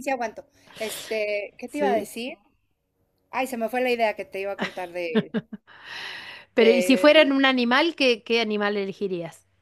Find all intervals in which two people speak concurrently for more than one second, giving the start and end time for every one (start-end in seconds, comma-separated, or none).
none